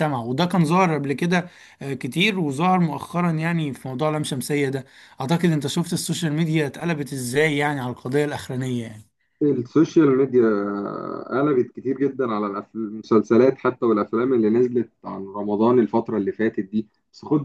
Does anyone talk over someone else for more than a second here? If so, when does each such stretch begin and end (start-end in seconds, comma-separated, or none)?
none